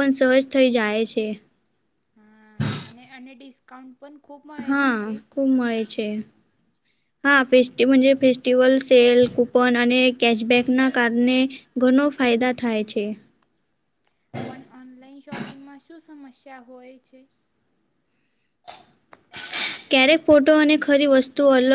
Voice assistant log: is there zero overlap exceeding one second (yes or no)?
yes